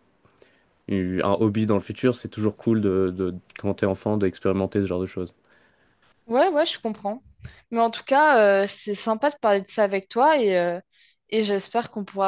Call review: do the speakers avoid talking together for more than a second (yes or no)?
yes